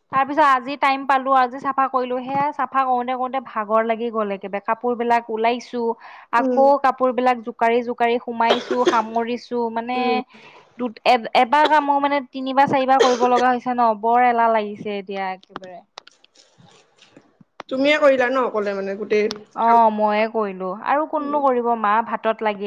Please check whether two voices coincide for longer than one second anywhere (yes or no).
no